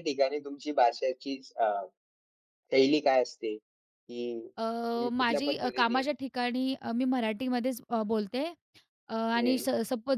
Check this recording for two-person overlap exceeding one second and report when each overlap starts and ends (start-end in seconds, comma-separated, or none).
4.6-6.0